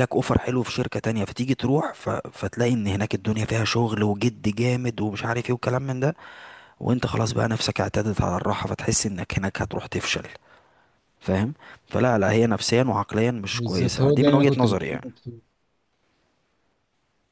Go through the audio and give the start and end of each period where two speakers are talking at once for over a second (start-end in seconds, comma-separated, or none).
13.5-15.1